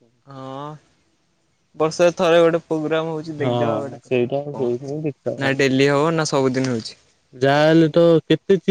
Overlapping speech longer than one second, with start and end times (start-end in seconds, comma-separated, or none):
3.4-5.0